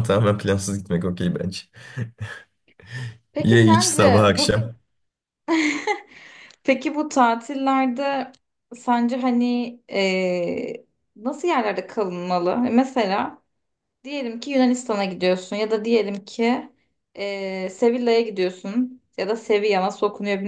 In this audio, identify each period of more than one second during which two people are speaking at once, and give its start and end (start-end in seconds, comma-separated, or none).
3.4-4.6